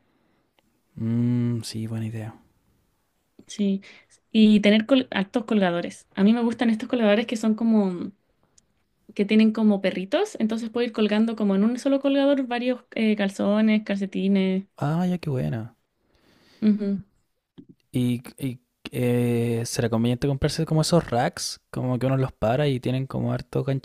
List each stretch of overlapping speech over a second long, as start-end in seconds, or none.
none